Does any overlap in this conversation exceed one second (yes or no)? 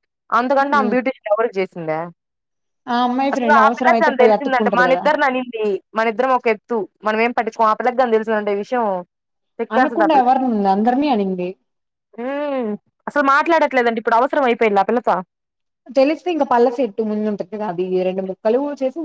yes